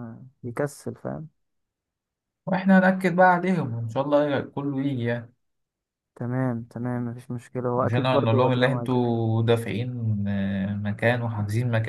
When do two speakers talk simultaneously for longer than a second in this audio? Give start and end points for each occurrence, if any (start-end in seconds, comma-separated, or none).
7.8-9.2